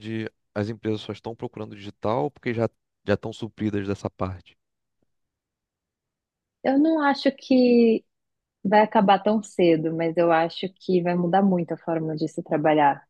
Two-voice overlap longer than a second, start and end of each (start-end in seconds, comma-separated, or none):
none